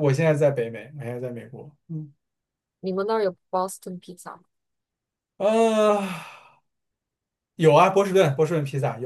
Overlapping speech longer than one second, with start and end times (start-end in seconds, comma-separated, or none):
none